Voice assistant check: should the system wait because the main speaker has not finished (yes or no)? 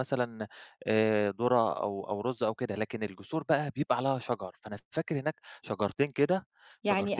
no